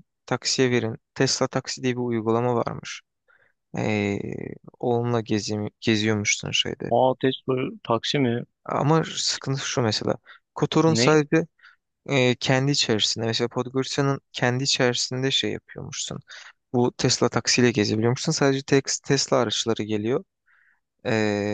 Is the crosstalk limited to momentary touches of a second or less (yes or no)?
yes